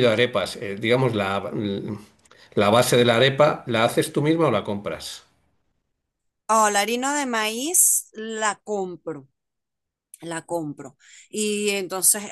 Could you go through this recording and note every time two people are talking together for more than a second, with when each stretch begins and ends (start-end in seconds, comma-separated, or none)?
none